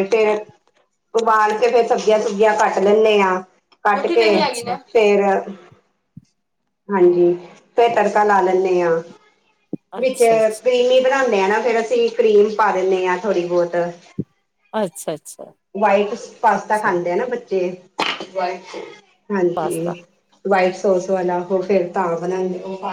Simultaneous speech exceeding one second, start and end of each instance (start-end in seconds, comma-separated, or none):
none